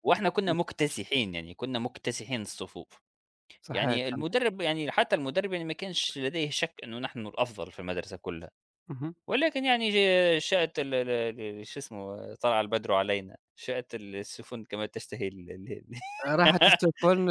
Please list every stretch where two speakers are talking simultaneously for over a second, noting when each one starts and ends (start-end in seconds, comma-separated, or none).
none